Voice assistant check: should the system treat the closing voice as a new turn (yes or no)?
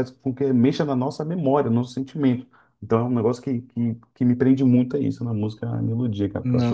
yes